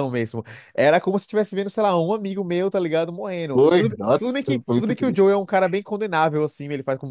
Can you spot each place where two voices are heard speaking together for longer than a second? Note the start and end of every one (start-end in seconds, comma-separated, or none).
3.5-5.4